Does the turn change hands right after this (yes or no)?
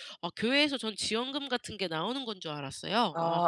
yes